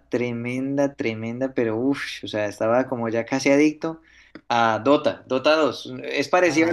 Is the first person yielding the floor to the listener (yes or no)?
yes